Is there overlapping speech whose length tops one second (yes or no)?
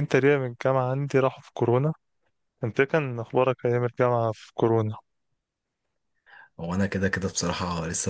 no